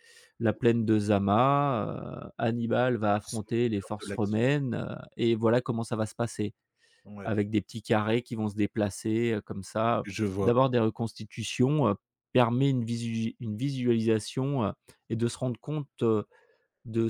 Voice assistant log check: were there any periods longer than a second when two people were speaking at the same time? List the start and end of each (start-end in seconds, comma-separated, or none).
3.2-4.4